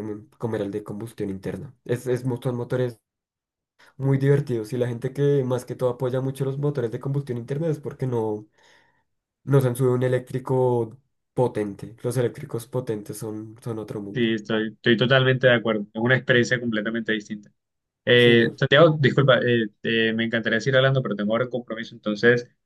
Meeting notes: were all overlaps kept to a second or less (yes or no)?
yes